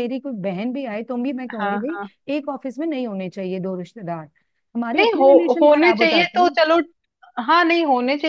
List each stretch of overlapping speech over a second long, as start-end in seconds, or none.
5.0-6.5